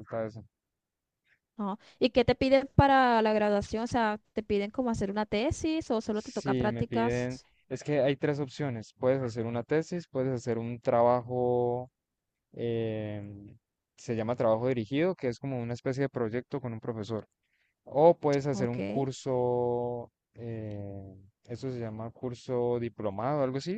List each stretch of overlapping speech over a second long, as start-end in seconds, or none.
6.1-7.5